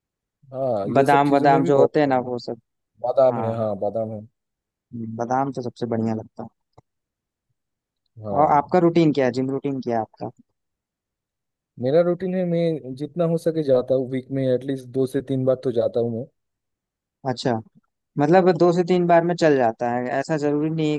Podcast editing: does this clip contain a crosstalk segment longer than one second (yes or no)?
yes